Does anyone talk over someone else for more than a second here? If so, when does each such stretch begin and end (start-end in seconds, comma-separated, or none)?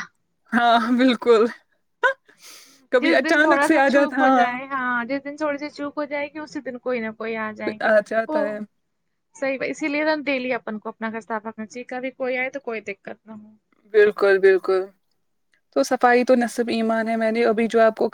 3.0-4.5